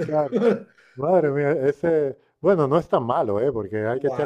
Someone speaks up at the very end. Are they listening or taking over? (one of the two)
taking over